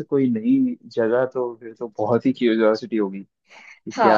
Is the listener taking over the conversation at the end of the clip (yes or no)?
yes